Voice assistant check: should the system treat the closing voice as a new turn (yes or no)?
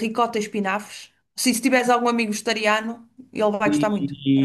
yes